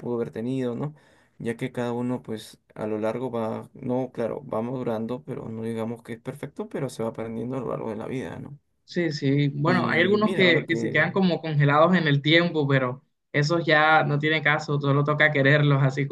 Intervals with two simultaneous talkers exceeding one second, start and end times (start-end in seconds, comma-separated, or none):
9.6-11.1